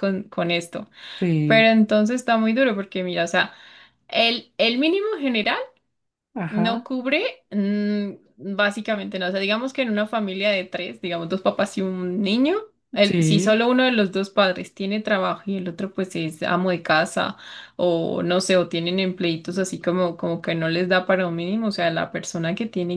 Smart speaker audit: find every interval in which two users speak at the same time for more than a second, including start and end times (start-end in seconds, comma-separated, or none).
none